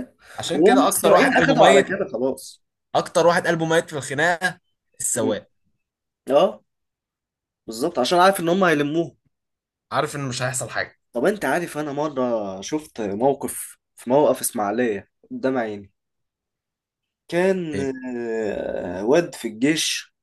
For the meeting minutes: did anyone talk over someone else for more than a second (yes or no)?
yes